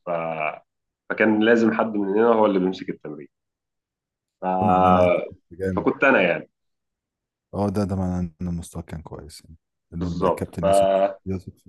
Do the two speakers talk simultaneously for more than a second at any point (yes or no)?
yes